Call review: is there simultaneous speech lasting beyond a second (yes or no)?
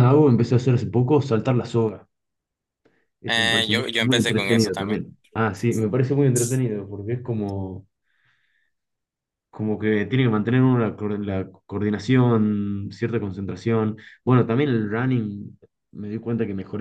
yes